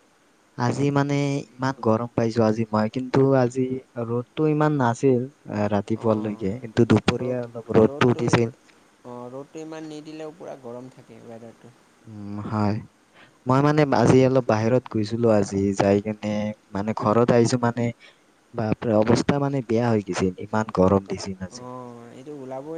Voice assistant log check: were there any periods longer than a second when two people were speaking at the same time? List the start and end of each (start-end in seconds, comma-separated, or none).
6.0-7.2